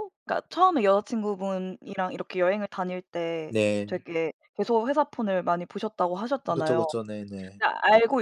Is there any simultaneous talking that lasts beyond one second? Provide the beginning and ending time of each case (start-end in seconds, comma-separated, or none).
none